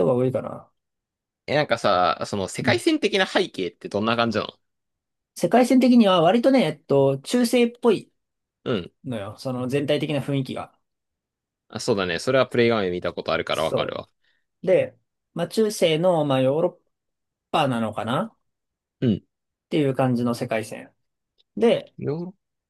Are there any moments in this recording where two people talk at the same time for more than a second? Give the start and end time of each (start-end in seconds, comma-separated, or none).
none